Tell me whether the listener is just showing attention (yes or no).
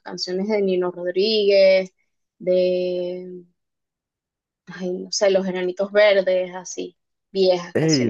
no